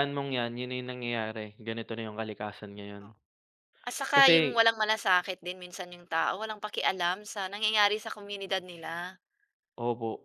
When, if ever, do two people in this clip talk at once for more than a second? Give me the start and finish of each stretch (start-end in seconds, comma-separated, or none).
none